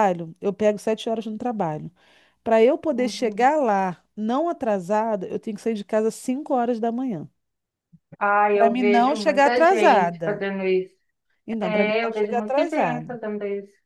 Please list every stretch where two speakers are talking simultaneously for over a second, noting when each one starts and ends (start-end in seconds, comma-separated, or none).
8.5-10.4, 11.6-13.1